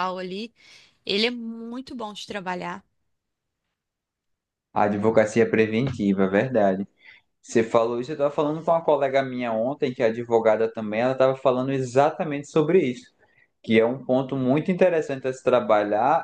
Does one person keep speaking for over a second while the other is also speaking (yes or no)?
no